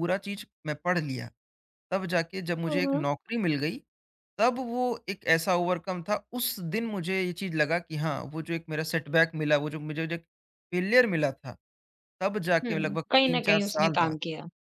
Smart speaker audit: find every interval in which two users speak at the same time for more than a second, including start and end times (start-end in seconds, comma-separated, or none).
12.7-14.2